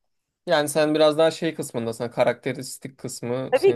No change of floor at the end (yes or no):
no